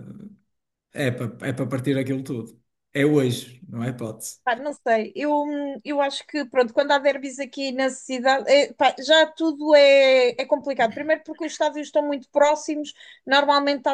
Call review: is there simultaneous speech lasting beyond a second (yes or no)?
no